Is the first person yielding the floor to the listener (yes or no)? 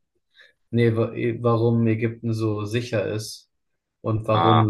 no